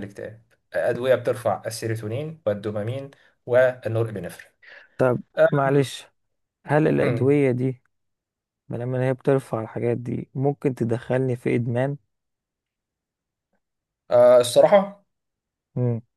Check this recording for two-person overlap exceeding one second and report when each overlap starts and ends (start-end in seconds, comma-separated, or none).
none